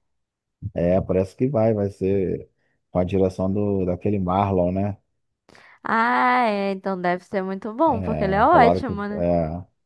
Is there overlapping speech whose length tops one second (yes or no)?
yes